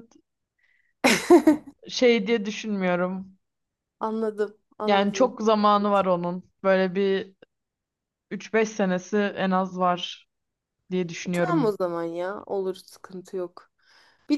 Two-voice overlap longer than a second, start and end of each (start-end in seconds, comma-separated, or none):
4.8-6.1